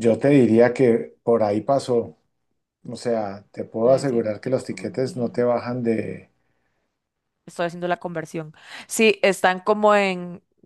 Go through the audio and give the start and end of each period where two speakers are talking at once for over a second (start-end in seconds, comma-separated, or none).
3.8-5.5